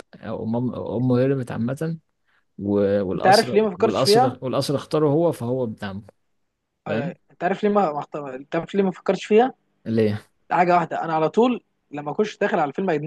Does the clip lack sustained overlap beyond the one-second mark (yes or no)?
no